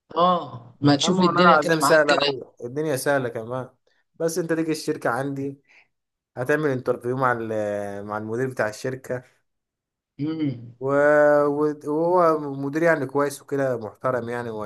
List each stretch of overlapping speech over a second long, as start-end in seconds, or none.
1.0-2.3